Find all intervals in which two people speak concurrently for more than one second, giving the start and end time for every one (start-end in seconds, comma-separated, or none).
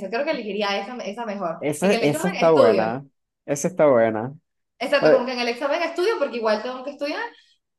1.6-2.9